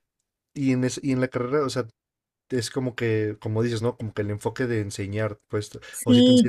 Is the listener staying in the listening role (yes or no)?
no